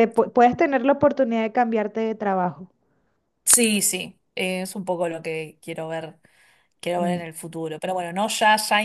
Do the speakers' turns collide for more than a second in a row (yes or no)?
no